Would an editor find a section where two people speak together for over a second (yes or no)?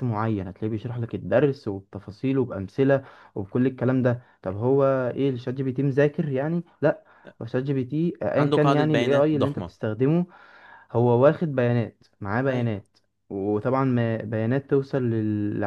yes